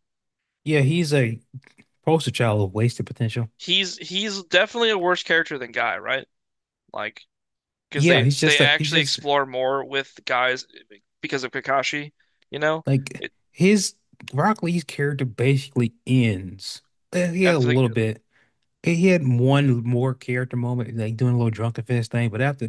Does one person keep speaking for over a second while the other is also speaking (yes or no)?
yes